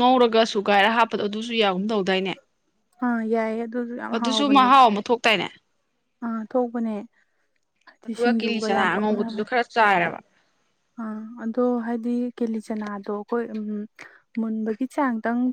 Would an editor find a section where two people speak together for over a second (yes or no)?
yes